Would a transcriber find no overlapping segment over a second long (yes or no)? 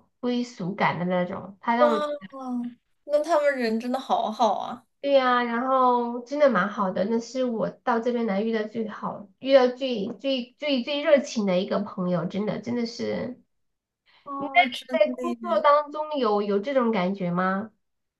no